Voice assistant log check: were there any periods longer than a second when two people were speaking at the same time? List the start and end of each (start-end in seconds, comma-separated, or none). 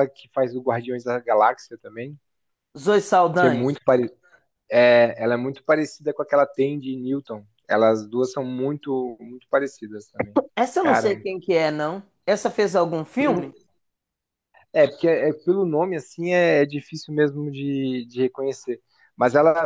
none